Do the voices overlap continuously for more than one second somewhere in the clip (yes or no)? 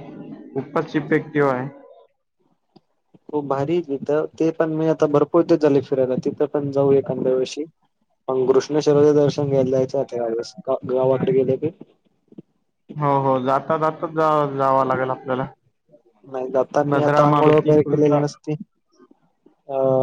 yes